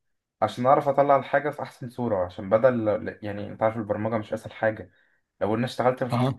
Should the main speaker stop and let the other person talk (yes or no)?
no